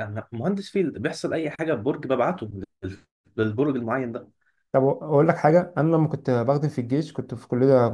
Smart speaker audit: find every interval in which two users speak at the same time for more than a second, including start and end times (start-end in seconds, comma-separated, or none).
none